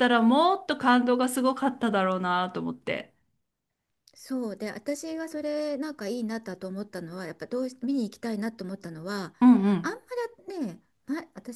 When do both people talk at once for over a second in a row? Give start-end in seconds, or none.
none